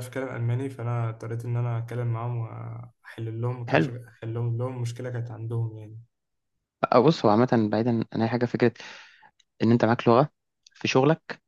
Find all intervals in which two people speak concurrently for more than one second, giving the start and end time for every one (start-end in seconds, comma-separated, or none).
none